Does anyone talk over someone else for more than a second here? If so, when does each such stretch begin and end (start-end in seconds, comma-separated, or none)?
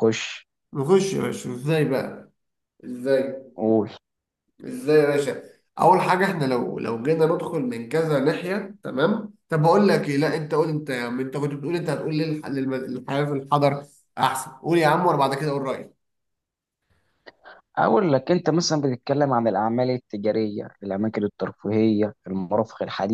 none